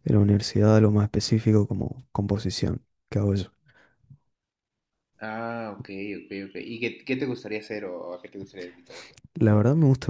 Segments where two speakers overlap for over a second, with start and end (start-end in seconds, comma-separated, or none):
none